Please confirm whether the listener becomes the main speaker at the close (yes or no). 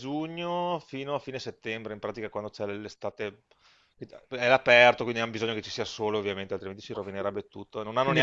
yes